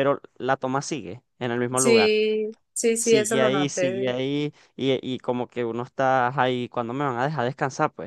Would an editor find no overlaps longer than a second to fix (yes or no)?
no